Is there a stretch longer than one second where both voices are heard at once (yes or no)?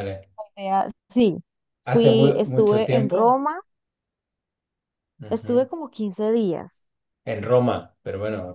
yes